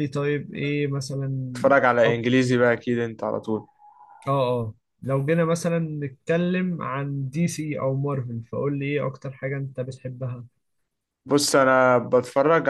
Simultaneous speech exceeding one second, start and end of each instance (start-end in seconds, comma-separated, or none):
none